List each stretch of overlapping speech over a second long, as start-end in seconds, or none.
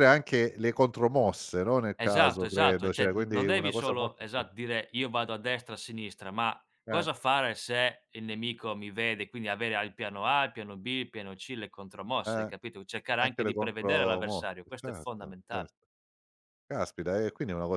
1.9-4.5, 13.2-15.7